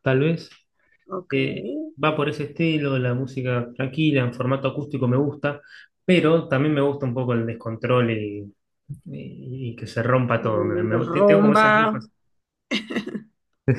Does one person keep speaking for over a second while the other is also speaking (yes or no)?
yes